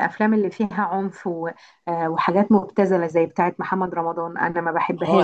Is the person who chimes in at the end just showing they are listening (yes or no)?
no